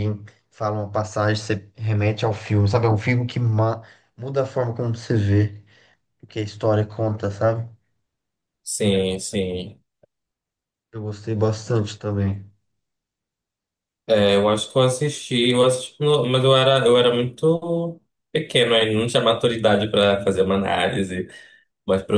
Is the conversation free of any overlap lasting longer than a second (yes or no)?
yes